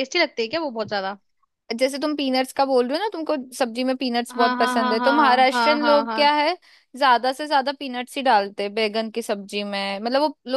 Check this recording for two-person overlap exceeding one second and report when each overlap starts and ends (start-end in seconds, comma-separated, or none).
4.3-6.2